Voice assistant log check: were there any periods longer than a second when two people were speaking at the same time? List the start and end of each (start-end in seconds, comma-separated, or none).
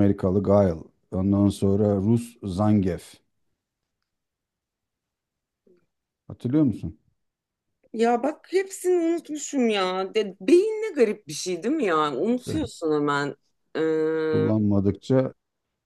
none